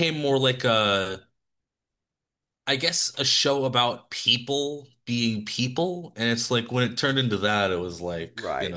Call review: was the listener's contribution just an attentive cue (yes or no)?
no